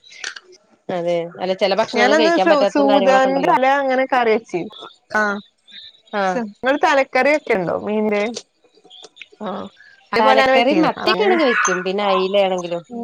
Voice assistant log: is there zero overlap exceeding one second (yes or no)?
no